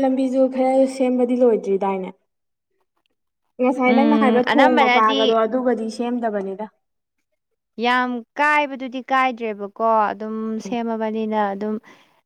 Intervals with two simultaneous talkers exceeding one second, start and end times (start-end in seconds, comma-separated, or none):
3.9-5.3